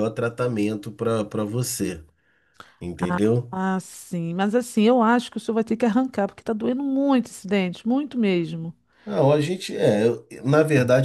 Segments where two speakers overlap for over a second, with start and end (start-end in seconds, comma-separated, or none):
none